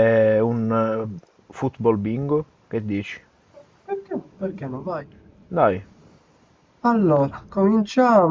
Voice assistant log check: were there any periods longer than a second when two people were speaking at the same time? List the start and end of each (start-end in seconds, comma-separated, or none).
none